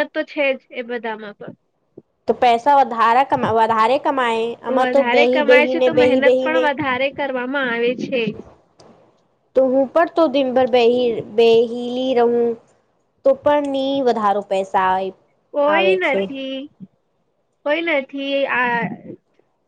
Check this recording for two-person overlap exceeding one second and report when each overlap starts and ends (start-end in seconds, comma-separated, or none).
4.7-6.6